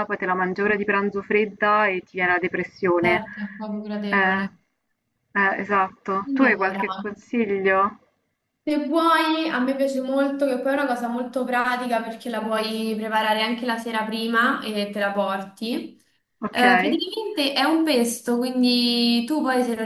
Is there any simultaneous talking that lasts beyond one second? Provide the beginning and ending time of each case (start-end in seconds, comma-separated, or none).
none